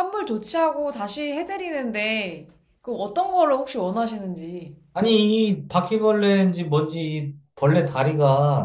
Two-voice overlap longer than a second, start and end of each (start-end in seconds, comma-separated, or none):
none